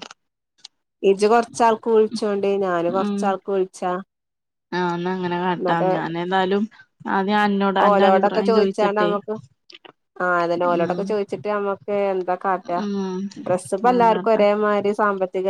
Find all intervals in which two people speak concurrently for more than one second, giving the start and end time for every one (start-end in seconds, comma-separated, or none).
7.8-9.1